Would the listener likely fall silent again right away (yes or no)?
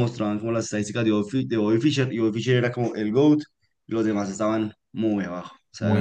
no